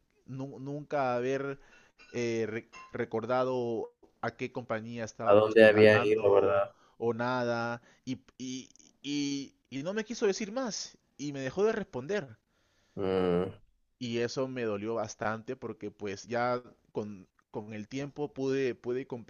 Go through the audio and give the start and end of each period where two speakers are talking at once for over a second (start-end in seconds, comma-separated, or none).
5.3-6.7